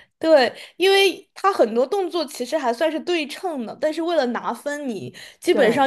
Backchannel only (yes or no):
yes